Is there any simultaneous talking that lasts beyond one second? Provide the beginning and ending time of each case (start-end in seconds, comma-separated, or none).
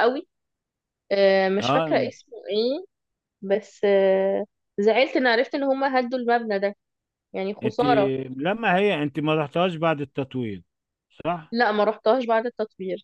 none